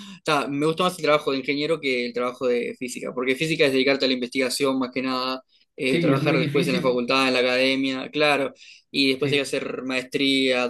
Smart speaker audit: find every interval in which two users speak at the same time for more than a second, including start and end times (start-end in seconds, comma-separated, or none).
5.8-7.1